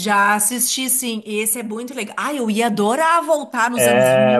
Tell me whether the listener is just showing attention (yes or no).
no